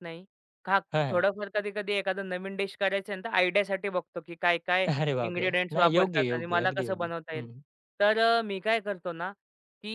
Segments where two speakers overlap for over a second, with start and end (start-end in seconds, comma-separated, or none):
5.3-7.5